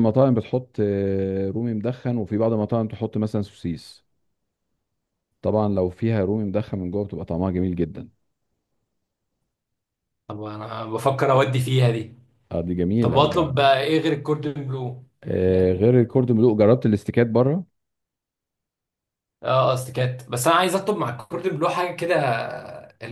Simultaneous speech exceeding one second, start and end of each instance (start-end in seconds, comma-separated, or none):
none